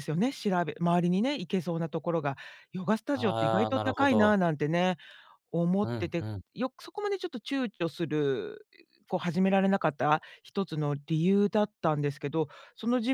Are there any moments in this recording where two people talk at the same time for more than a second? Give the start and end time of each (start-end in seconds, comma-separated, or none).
3.1-4.3